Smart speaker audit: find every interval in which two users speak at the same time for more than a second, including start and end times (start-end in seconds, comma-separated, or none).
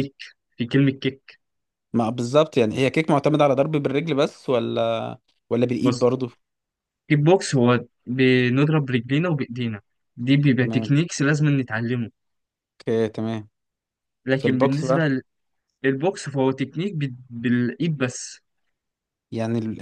none